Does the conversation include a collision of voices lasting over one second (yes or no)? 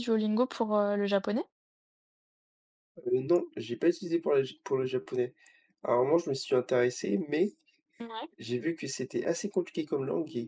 no